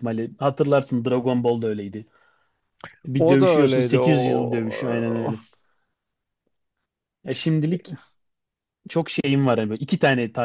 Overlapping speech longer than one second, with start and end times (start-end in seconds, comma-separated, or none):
3.2-5.3